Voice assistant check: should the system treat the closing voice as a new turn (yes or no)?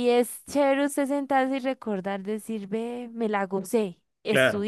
no